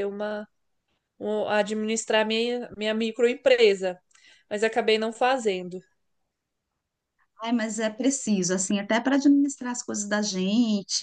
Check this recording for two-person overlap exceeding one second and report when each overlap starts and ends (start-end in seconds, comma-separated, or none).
none